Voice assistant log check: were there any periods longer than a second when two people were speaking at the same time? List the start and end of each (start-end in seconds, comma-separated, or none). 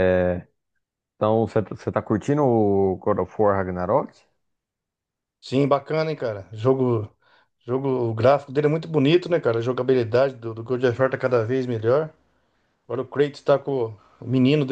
none